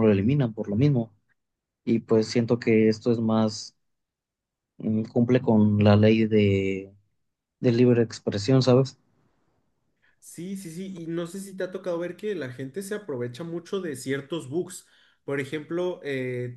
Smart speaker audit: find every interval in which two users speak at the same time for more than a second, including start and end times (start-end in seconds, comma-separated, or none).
none